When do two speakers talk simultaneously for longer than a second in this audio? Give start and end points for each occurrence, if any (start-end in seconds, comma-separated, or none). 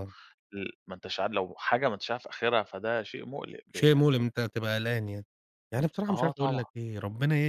none